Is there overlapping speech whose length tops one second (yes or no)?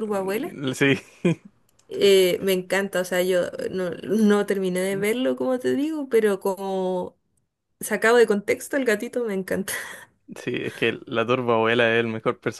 no